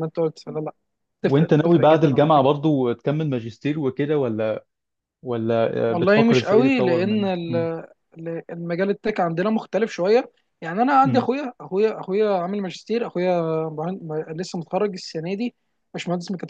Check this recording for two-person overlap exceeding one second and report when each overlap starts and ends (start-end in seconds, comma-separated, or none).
1.2-2.5, 5.9-7.7